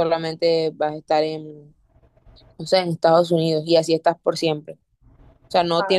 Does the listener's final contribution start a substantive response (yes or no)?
no